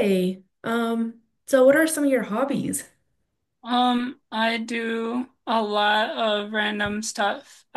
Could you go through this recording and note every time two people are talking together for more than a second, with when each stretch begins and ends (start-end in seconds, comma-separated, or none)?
none